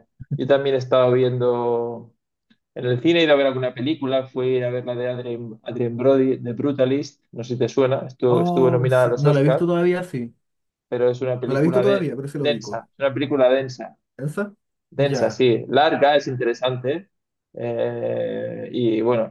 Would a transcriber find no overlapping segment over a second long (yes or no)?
no